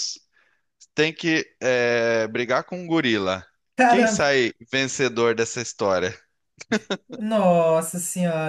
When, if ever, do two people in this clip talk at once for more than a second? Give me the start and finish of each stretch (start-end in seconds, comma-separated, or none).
none